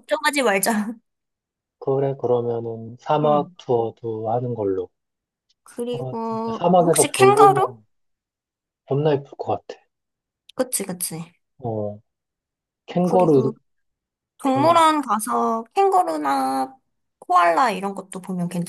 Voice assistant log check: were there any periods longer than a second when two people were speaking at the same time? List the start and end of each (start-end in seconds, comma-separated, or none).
5.9-7.8